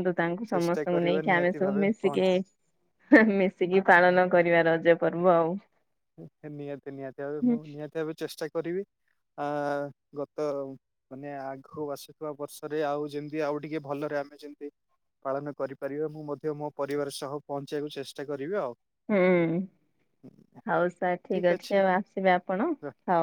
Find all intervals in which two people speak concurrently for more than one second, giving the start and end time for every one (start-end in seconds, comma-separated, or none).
0.5-2.3